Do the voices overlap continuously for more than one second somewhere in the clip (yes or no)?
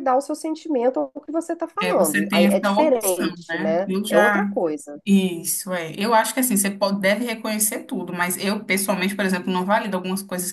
yes